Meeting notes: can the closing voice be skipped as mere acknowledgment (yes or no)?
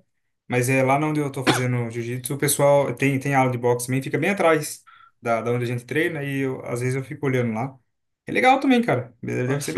no